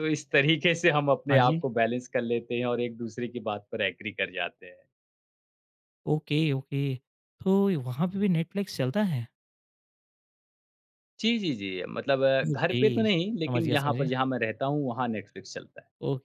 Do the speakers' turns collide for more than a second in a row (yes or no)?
yes